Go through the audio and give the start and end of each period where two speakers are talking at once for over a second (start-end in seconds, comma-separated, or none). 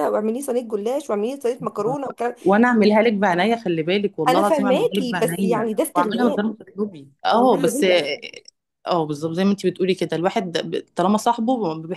4.3-6.5